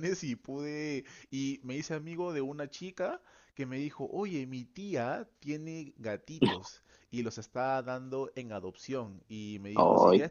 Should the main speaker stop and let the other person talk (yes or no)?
no